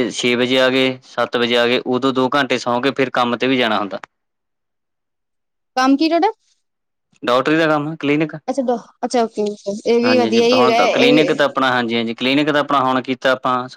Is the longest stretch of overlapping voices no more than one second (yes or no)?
no